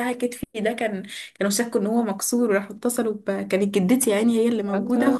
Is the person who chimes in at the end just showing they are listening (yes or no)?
yes